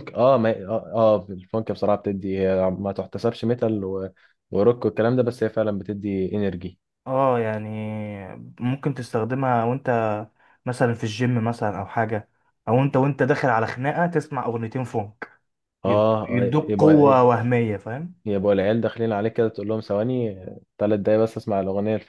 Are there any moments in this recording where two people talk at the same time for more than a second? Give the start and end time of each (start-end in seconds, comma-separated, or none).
15.8-17.3